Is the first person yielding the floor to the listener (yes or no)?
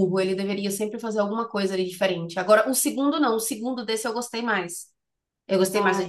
no